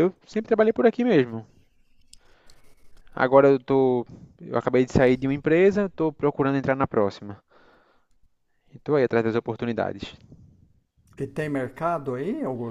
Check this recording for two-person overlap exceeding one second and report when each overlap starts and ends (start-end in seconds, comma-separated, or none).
none